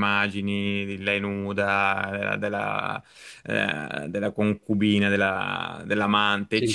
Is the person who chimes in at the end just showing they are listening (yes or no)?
yes